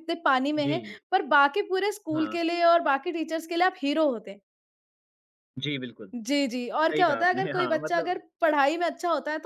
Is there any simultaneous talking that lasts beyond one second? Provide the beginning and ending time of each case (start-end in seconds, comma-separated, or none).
6.7-8.2